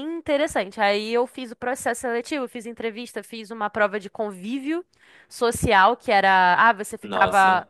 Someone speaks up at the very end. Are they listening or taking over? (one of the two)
listening